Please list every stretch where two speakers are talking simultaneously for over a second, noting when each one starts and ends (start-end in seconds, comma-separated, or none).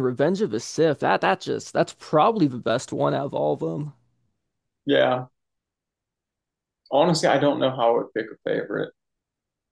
none